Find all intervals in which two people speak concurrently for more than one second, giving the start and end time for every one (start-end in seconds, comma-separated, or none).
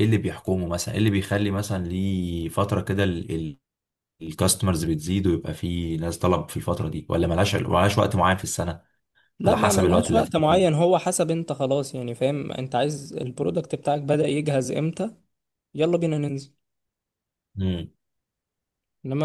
9.5-10.8